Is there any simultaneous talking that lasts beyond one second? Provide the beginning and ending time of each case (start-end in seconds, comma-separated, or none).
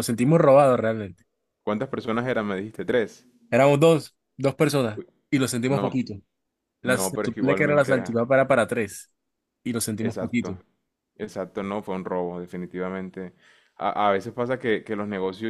6.8-8.2